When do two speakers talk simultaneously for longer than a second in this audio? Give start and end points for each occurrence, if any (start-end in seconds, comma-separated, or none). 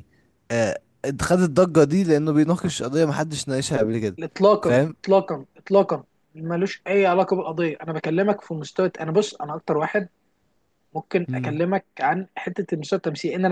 none